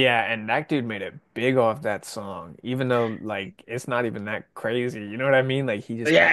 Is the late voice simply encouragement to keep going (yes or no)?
no